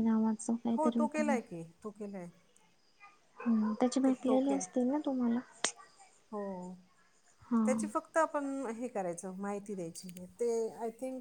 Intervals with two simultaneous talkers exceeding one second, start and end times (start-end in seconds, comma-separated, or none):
none